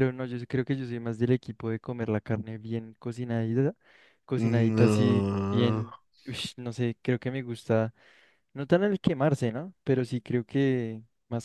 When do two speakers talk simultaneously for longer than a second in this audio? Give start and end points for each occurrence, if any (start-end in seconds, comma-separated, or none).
4.4-5.9